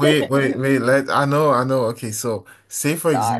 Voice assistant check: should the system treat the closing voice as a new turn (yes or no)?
no